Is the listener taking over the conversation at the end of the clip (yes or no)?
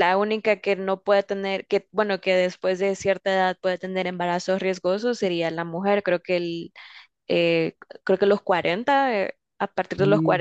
no